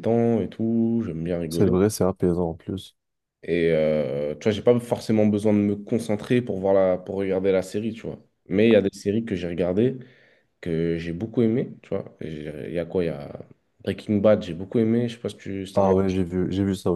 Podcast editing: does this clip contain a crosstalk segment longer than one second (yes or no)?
no